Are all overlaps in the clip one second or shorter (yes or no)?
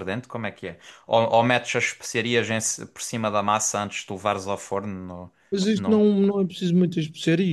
yes